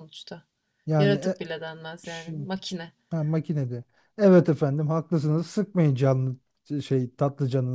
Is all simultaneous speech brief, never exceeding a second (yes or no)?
yes